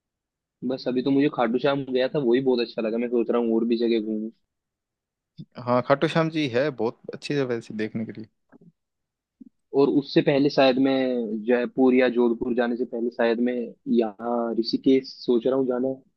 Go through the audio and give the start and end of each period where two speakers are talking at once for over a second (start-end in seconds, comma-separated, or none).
none